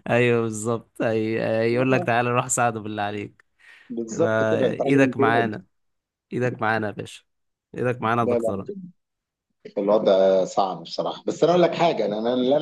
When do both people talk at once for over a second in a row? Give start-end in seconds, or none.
4.1-5.5